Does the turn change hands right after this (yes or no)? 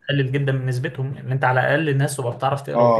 yes